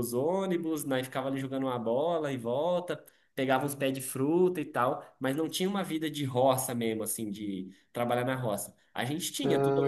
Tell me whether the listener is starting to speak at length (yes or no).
no